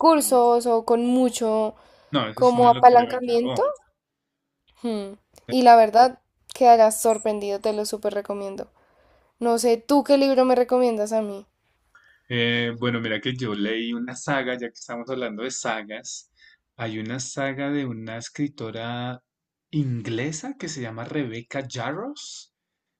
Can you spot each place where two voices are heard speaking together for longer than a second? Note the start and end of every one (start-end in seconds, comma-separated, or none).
2.3-3.6